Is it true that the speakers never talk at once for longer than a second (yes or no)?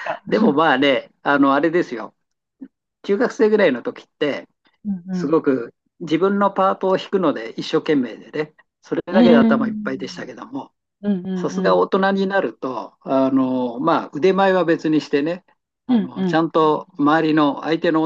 no